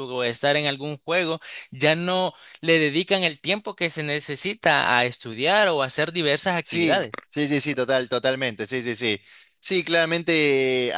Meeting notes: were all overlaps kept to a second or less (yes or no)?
yes